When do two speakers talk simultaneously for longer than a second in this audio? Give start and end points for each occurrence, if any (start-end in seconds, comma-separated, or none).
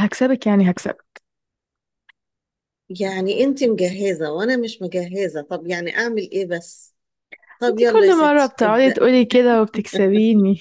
7.7-9.0